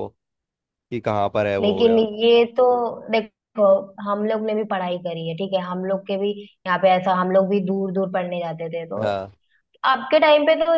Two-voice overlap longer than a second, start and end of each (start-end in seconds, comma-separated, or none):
none